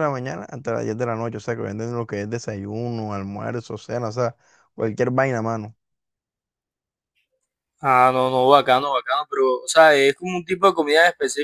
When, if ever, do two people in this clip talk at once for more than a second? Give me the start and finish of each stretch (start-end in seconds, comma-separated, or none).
none